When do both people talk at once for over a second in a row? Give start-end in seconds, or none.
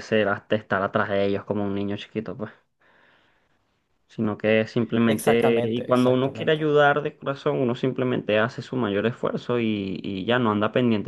5.0-6.6